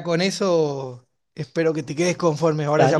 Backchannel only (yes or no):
no